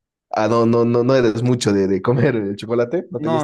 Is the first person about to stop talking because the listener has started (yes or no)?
yes